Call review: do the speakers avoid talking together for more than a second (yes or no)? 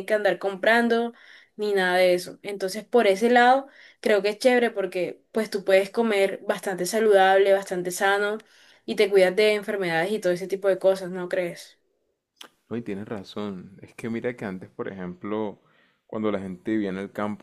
yes